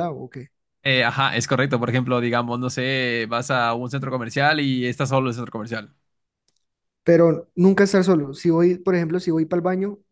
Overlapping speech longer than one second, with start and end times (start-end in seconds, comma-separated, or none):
none